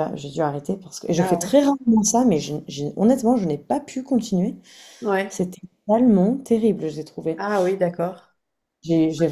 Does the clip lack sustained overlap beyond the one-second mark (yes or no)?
yes